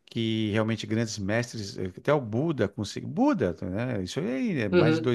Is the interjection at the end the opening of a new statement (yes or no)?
no